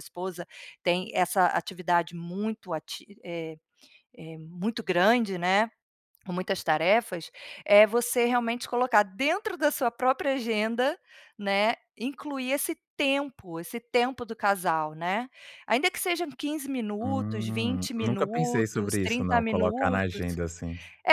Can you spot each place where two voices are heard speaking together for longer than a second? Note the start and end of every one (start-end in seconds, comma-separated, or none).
17.0-20.2